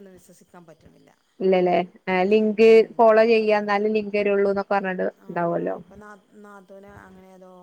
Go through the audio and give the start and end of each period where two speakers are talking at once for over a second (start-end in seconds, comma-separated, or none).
3.0-5.8